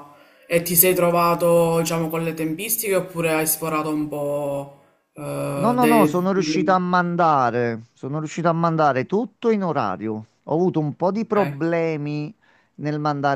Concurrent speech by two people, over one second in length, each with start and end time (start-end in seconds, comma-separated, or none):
5.5-6.8